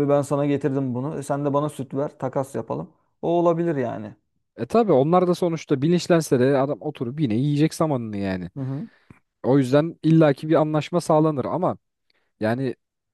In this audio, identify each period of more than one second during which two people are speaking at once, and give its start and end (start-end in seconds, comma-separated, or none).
none